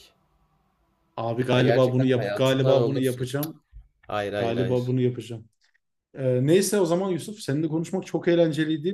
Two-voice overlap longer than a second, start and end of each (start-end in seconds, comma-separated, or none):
1.5-3.3